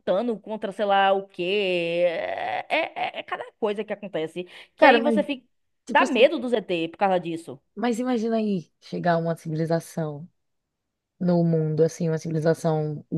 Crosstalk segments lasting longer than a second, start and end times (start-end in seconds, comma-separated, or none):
none